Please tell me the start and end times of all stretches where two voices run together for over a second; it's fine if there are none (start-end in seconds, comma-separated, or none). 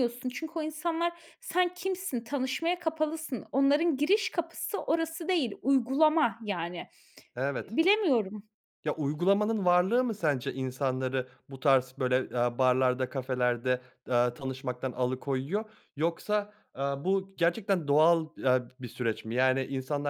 none